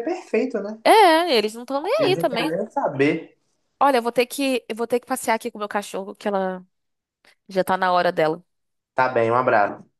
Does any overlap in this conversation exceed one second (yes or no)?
no